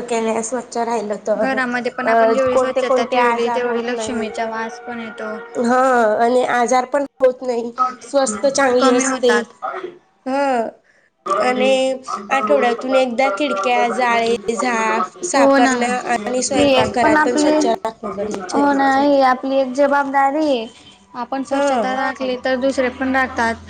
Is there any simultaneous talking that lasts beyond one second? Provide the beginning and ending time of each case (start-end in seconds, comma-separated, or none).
3.2-4.5, 15.3-17.0